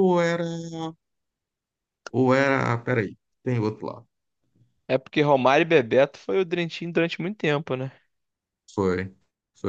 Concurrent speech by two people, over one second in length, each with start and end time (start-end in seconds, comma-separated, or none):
none